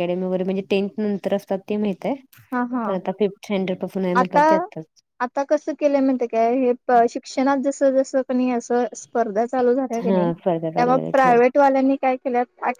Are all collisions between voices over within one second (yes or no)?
no